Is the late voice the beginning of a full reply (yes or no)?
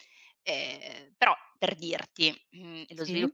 no